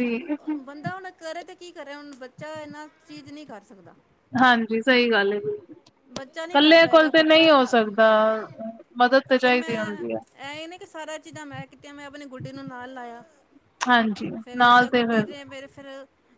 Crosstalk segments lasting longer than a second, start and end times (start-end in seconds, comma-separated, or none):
6.5-8.1